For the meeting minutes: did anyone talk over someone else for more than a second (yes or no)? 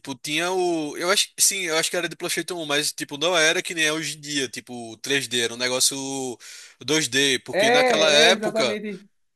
yes